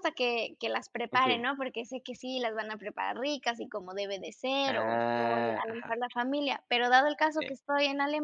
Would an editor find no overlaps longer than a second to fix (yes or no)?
no